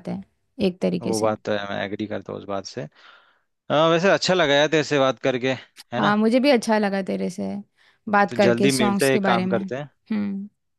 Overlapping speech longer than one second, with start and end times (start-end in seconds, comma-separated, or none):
8.3-9.9